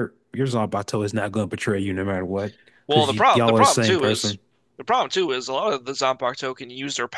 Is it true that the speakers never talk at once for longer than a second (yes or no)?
no